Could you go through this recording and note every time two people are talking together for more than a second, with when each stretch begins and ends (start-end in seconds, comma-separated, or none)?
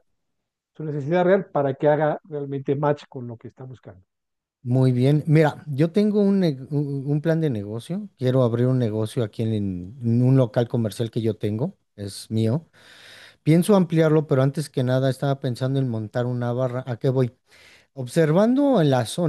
none